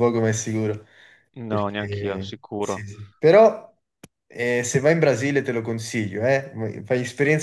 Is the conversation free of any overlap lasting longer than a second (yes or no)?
no